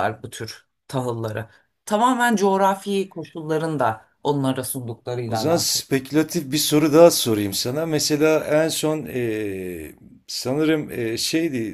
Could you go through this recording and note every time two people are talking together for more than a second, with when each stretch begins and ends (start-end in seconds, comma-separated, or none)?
none